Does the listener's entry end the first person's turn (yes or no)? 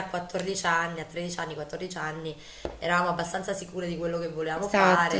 no